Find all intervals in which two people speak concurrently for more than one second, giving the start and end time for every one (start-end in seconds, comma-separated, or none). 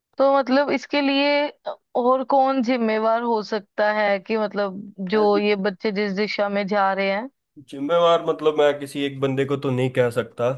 none